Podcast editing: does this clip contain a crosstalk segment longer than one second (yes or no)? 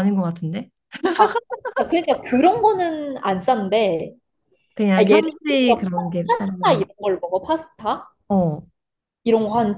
yes